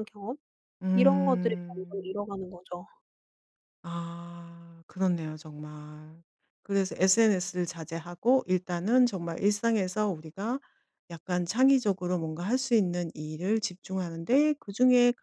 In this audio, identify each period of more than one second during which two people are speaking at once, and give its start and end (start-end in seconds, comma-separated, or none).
0.9-2.1